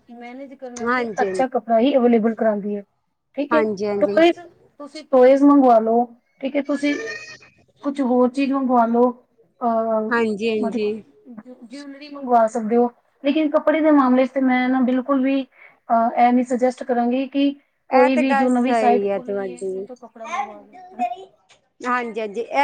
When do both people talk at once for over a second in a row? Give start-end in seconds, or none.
17.9-19.8